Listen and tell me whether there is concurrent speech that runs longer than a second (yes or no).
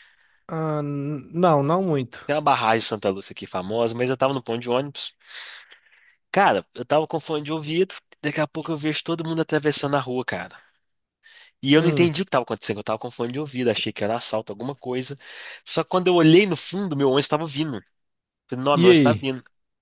no